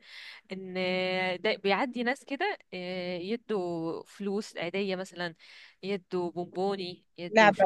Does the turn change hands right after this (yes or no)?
no